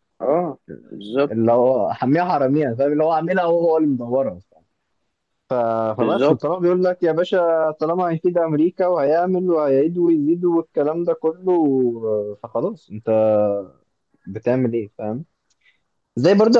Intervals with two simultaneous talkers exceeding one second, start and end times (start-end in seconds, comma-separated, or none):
none